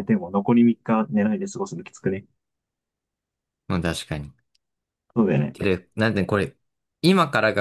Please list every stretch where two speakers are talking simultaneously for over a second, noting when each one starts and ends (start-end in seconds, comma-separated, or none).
none